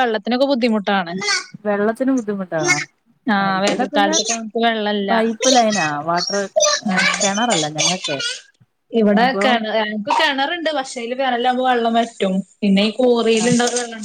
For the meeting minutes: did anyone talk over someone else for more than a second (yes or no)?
no